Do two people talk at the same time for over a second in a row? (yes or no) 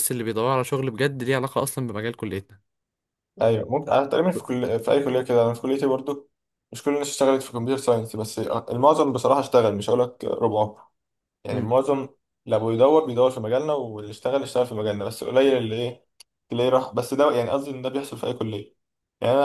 no